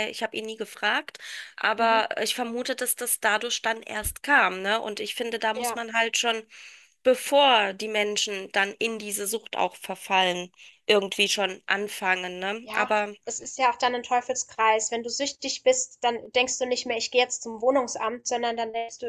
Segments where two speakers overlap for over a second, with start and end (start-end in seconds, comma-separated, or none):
none